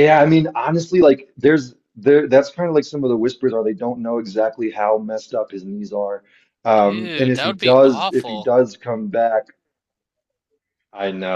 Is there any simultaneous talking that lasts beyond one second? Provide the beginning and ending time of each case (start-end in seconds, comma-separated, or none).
6.8-8.5